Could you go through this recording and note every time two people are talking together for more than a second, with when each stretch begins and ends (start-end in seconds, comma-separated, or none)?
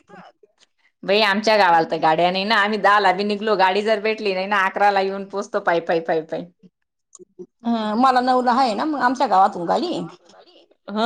none